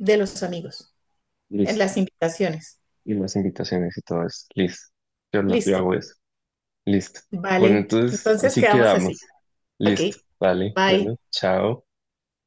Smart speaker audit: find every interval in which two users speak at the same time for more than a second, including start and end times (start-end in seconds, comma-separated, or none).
7.6-9.2